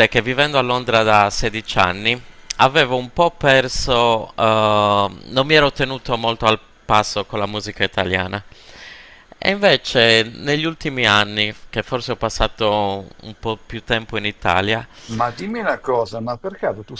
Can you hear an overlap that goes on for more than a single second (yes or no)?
no